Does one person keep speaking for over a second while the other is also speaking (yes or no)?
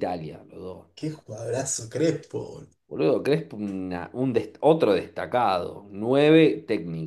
no